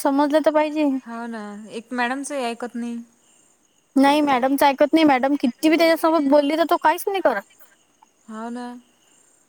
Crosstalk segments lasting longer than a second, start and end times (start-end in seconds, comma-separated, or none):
none